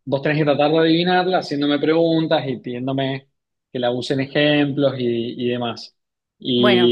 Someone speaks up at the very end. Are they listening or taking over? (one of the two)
listening